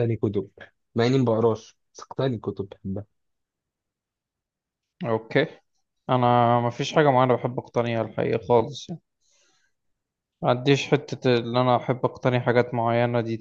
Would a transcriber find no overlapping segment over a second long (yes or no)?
yes